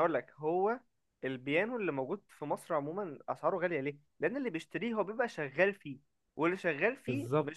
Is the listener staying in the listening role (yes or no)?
yes